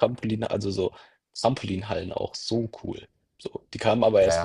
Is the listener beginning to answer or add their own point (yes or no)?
yes